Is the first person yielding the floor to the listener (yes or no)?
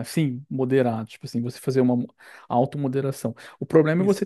no